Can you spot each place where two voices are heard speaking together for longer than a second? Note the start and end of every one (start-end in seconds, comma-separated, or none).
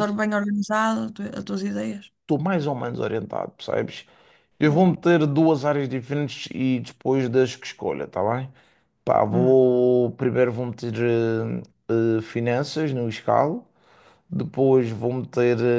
none